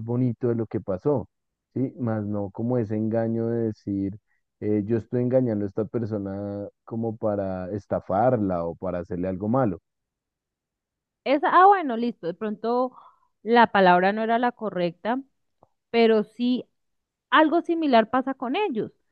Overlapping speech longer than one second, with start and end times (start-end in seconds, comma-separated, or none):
none